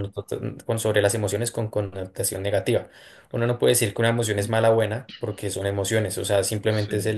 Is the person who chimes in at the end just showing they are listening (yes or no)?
yes